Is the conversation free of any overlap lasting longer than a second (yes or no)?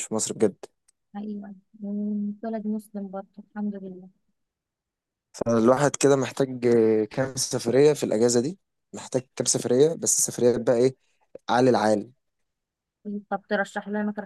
yes